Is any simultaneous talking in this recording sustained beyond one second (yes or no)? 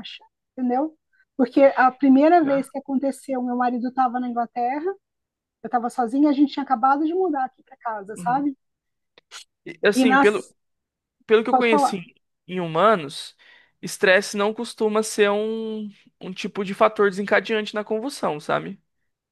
no